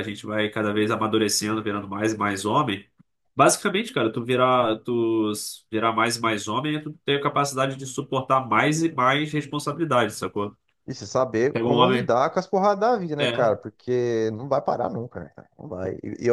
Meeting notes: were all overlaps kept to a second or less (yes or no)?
yes